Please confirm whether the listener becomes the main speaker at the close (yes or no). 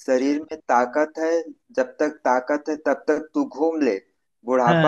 no